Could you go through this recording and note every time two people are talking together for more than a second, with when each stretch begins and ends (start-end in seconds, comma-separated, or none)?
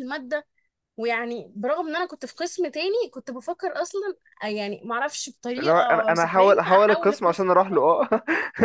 5.6-7.5